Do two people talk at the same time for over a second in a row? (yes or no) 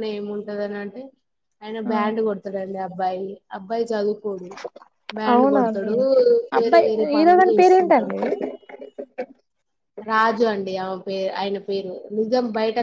yes